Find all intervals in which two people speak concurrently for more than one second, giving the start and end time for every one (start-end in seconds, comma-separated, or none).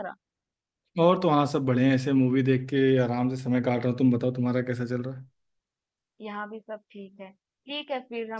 none